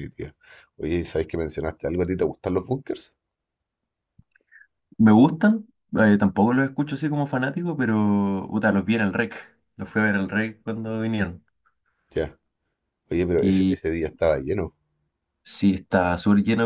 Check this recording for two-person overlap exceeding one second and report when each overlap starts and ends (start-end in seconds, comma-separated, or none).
none